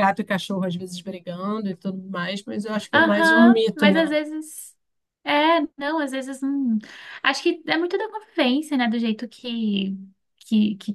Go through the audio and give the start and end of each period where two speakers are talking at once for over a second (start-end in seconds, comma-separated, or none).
2.9-4.2